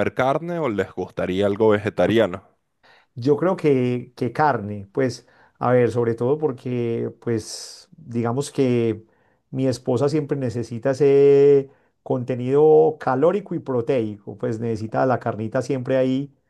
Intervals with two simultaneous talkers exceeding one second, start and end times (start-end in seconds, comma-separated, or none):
none